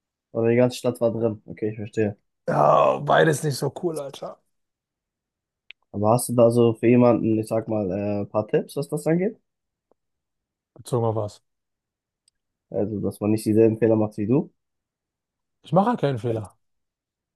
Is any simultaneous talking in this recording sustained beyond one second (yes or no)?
no